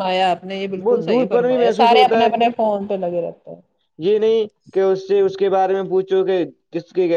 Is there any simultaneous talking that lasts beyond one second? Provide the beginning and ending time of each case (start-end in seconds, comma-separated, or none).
0.9-2.3